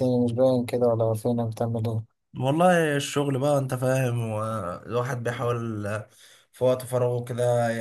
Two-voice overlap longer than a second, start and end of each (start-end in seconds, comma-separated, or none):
none